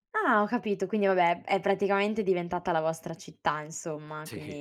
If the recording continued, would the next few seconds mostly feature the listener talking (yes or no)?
no